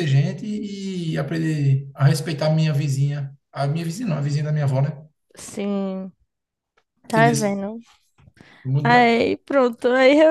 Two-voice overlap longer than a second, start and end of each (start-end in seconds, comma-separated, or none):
none